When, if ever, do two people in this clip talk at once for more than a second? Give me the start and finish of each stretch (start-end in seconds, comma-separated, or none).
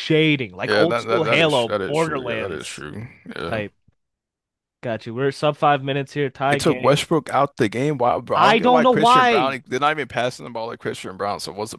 0.7-2.9, 8.3-9.6